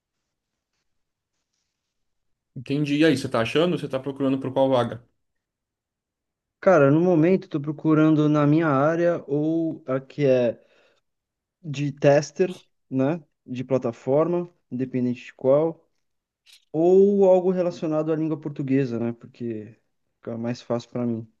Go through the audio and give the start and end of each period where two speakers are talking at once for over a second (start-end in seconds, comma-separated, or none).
none